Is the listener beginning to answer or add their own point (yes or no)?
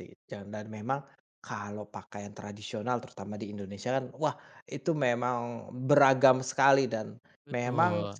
no